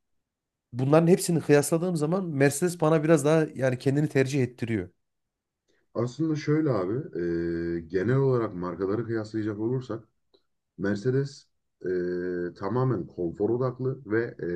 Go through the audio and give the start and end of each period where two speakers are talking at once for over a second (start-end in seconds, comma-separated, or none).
none